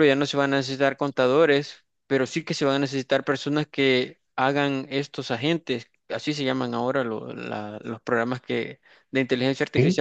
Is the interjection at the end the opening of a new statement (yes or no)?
no